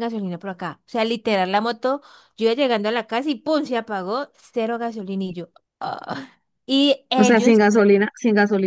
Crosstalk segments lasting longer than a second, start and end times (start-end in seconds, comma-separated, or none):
none